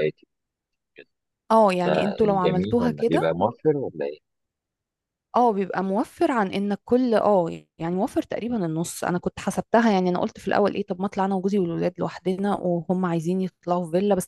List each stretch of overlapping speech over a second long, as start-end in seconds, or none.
1.8-3.3